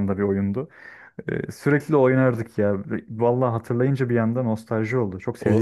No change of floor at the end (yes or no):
no